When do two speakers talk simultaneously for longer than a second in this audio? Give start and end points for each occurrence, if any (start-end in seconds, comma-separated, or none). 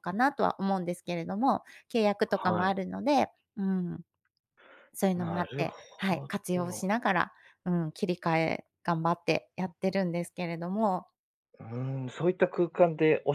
5.2-6.9